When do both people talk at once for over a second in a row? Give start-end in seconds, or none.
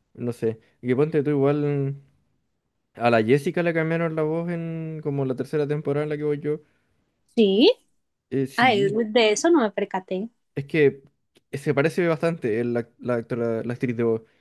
none